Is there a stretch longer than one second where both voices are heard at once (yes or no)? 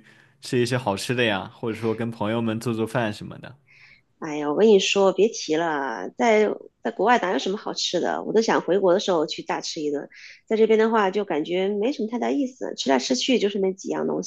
no